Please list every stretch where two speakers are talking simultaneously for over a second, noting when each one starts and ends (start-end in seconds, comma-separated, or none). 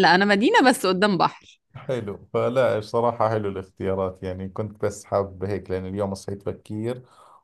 none